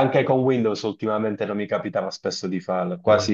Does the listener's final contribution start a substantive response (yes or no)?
no